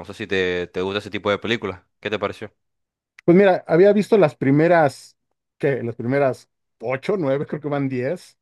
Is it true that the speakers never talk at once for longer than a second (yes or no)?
yes